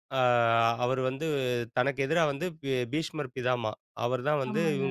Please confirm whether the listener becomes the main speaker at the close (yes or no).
no